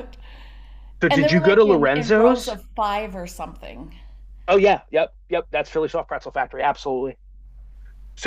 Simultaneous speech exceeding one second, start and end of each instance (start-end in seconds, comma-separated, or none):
1.1-2.6